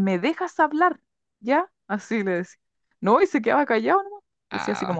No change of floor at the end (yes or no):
yes